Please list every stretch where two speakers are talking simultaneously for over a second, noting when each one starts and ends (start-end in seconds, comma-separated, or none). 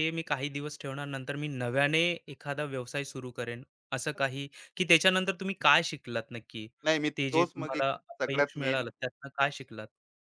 7.2-8.9